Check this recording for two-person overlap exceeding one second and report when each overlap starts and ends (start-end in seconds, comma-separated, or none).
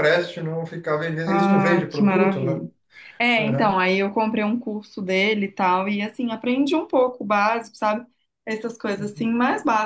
1.3-2.6